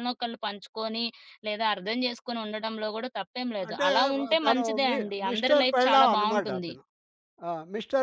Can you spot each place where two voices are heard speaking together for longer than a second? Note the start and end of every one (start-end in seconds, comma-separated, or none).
3.7-6.7